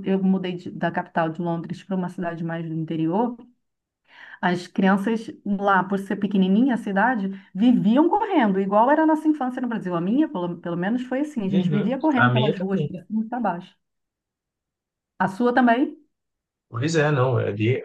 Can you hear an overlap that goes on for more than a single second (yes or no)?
yes